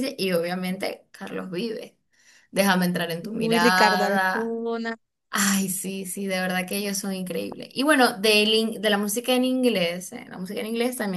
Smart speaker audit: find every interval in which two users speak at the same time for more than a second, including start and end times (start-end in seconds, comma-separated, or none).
3.2-4.6